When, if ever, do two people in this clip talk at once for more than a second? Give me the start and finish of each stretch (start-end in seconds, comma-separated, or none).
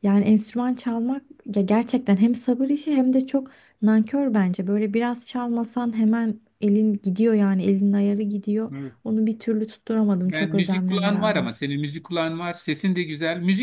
10.2-11.5